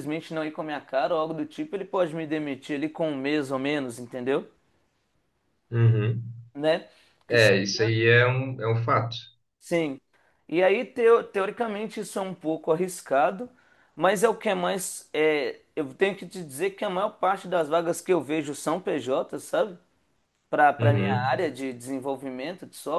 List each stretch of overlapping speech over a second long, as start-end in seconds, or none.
none